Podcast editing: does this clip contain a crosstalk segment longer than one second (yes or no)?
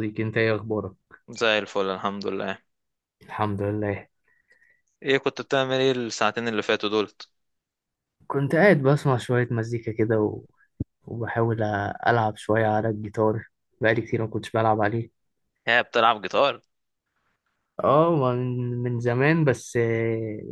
no